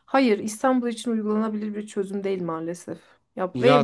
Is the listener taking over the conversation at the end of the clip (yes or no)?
yes